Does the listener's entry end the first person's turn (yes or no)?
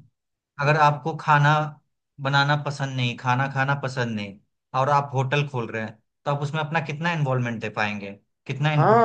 yes